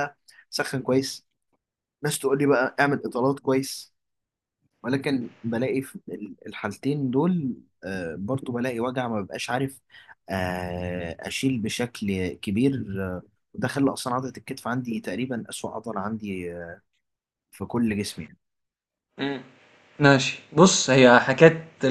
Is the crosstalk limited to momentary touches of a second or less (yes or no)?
yes